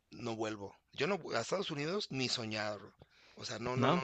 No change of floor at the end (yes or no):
yes